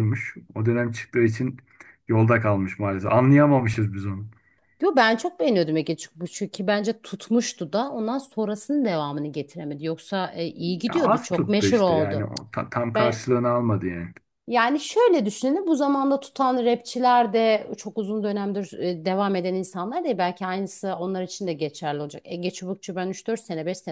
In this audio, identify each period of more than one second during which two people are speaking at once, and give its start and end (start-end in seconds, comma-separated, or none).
10.9-12.3